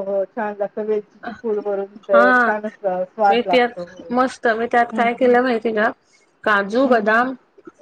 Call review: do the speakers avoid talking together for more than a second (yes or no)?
yes